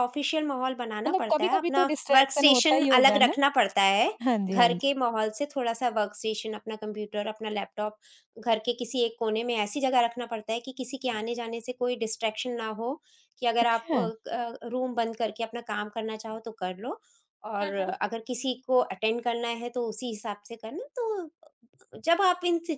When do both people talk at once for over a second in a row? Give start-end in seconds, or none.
1.1-3.3